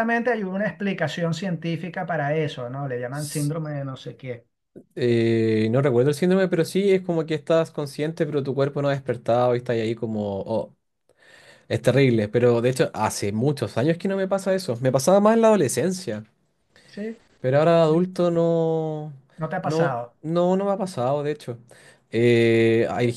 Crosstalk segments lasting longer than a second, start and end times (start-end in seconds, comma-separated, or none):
none